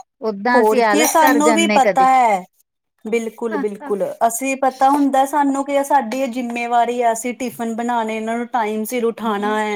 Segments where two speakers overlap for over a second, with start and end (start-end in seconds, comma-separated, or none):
0.5-2.1